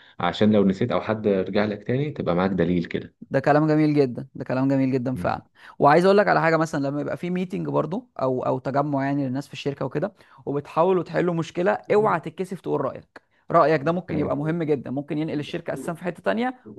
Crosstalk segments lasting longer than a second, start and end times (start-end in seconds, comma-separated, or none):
none